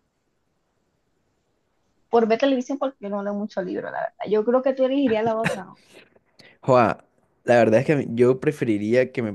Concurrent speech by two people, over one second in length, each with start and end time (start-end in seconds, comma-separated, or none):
none